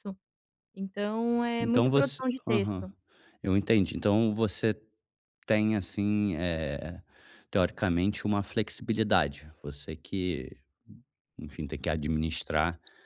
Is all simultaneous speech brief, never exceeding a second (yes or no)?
no